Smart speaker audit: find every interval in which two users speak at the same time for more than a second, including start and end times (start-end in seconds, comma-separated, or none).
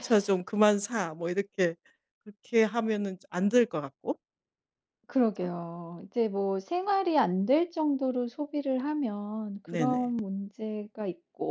none